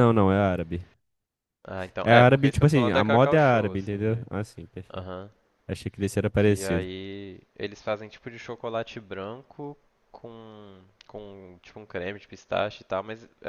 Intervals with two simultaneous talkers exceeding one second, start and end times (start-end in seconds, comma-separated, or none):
2.0-4.3